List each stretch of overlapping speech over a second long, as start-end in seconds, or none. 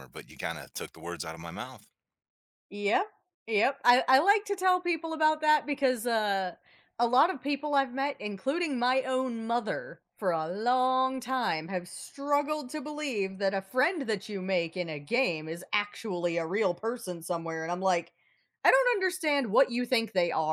none